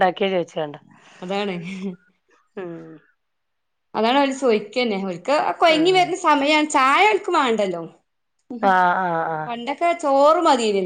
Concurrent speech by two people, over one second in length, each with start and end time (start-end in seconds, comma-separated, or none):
none